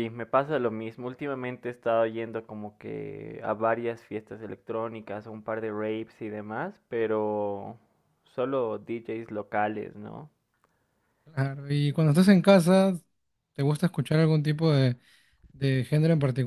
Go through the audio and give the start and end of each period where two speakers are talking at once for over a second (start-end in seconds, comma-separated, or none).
none